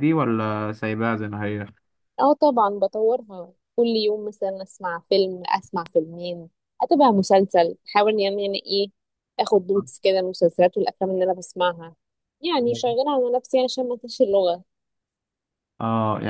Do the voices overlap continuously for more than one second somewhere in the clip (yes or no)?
no